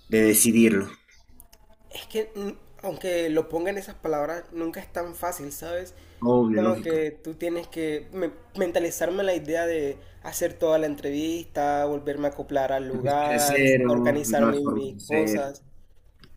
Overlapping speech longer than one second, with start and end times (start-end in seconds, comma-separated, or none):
12.9-15.5